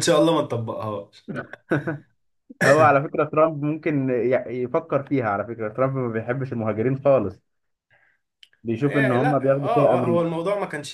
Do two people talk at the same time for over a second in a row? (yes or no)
yes